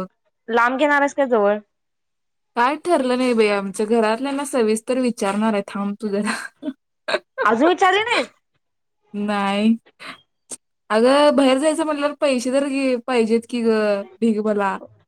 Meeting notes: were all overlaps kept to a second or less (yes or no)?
yes